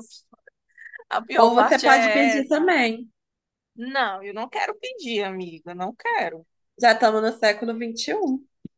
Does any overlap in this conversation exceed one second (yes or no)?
yes